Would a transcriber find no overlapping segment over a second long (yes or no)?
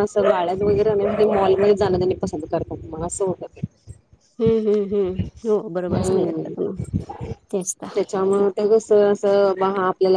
yes